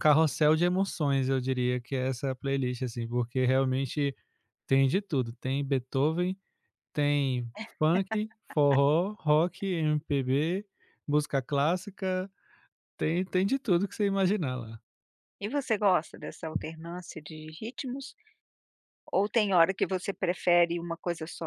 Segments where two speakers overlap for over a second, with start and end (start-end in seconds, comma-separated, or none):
none